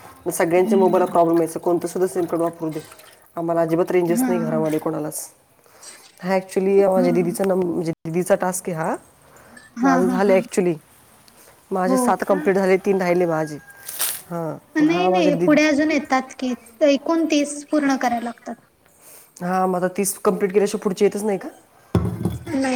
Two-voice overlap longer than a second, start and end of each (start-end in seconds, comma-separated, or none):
none